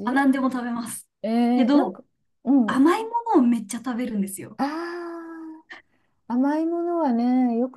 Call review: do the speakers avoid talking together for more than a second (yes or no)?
yes